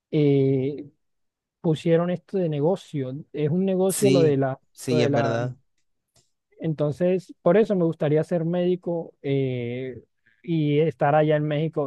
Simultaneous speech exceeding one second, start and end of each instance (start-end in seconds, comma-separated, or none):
3.9-5.4